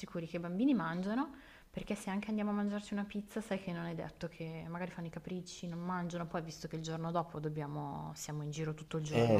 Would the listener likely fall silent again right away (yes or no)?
no